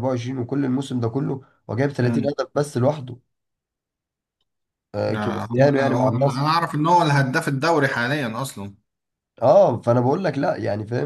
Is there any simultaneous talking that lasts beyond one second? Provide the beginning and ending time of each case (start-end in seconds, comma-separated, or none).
5.1-6.5